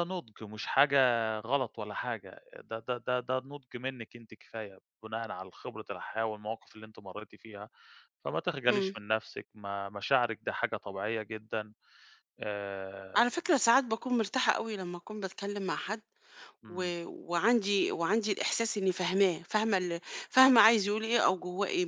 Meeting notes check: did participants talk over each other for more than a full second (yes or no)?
no